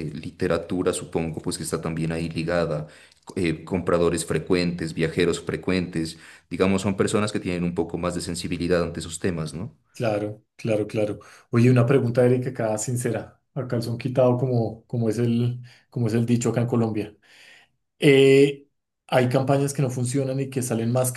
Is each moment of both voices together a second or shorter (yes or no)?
yes